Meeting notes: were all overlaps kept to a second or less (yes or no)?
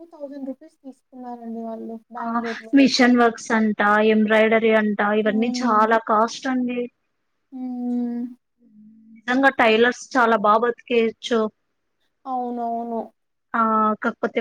yes